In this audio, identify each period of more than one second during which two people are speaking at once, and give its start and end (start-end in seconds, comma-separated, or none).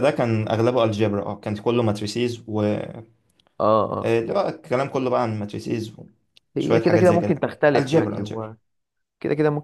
6.6-8.5